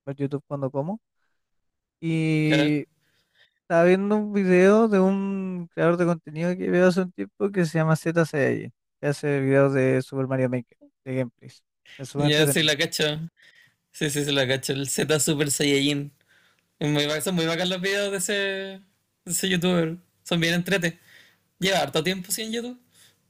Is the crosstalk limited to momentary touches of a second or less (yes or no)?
yes